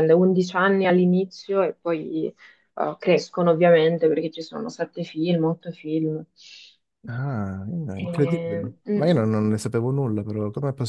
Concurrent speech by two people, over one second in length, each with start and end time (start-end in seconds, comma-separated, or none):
8.0-9.3